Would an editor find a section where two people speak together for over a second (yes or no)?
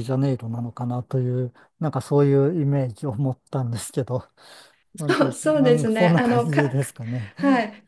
yes